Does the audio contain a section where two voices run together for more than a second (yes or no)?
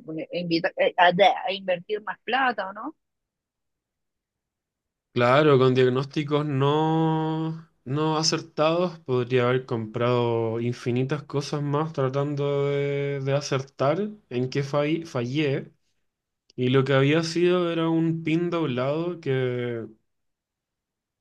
no